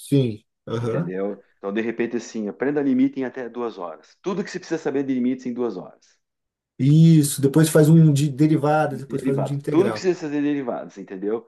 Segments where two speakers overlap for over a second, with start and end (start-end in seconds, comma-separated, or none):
8.9-10.1